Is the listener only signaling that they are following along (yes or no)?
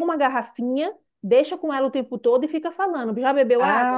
no